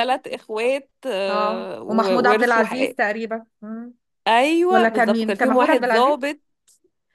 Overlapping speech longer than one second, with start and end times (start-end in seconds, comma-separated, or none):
1.3-2.9, 4.7-6.2